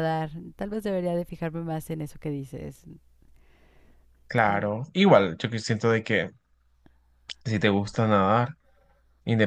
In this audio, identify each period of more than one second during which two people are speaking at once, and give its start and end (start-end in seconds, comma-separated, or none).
none